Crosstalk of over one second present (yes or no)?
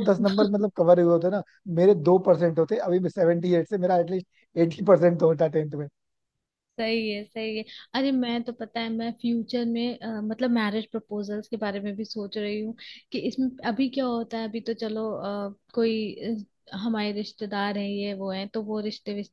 no